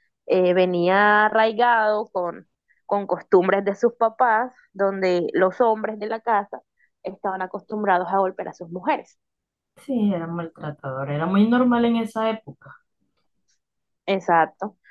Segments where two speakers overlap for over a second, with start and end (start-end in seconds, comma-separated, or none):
none